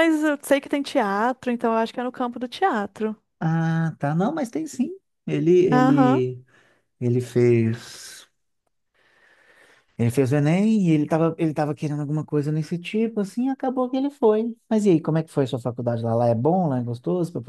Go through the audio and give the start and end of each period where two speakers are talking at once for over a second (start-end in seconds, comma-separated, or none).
none